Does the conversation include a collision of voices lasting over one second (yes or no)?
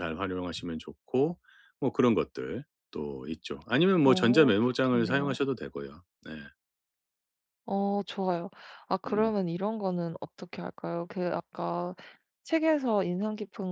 yes